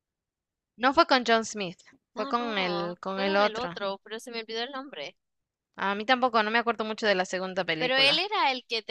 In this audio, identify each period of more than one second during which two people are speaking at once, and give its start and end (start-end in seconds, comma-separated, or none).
2.1-3.8